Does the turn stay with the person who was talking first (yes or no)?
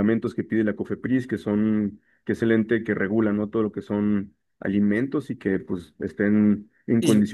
no